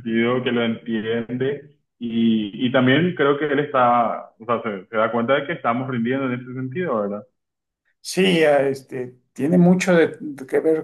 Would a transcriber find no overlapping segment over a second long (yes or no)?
yes